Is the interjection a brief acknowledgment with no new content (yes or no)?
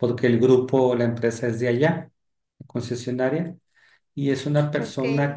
yes